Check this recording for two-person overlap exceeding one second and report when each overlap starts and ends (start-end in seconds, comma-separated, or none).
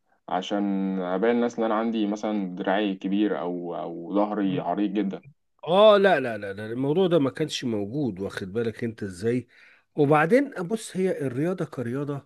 none